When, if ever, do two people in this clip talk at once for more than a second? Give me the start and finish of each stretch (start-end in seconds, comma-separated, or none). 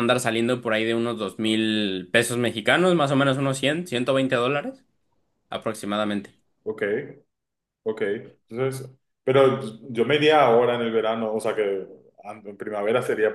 none